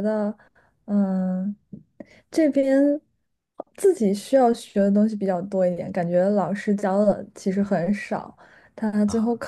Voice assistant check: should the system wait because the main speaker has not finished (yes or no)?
yes